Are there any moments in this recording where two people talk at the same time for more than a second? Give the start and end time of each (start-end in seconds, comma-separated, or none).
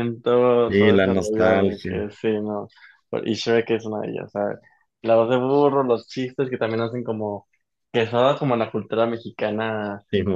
0.7-2.1